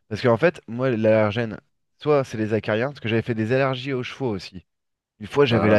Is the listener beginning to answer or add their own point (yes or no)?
no